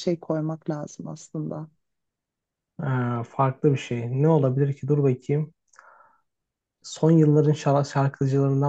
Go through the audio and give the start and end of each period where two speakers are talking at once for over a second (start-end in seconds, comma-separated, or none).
none